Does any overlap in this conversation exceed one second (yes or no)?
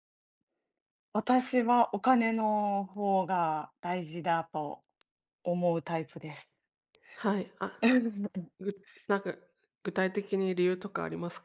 no